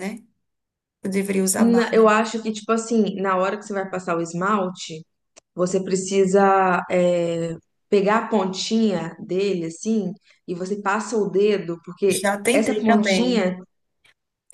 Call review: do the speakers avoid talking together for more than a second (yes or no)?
no